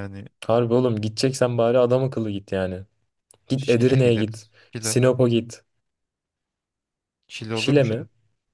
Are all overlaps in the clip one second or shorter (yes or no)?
no